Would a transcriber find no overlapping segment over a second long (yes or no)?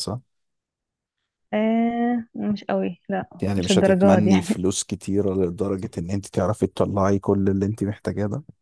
no